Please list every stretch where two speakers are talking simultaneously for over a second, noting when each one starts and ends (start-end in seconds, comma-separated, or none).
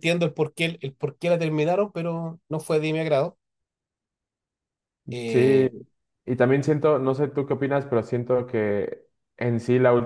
none